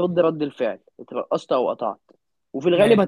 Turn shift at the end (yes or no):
no